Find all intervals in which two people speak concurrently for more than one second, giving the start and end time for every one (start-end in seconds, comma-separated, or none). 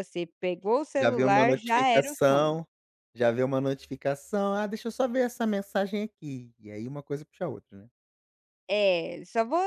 0.9-2.6